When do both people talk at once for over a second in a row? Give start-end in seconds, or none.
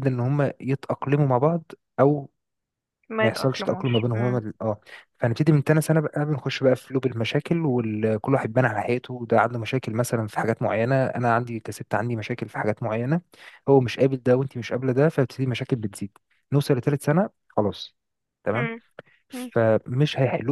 3.2-4.4